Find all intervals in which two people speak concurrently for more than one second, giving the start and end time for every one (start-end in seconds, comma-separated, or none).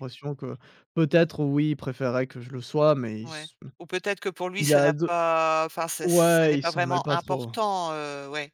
6.0-7.5